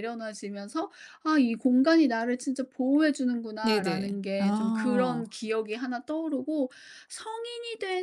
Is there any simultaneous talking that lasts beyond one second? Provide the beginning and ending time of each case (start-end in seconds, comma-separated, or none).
3.6-5.3